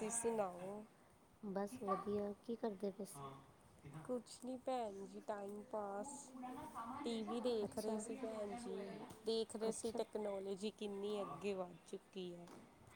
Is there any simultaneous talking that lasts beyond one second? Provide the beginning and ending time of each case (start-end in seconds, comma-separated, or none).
none